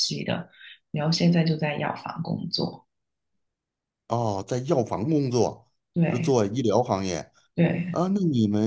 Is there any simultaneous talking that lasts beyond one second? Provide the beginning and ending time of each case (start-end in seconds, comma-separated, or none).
none